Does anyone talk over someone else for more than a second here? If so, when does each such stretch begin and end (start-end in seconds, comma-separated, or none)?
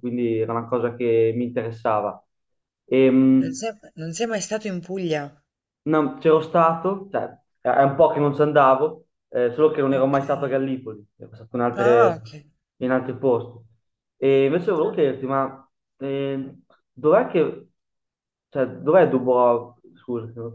none